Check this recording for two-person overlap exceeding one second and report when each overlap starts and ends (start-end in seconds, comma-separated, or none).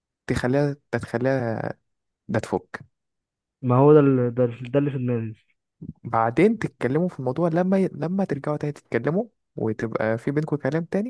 none